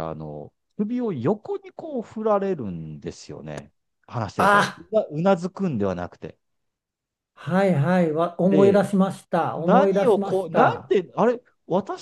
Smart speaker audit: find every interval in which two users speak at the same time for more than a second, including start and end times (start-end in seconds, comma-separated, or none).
9.5-10.9